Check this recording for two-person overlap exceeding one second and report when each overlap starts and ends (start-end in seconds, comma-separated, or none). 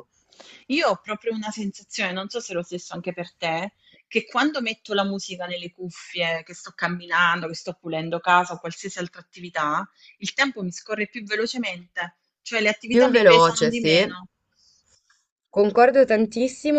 12.9-14.1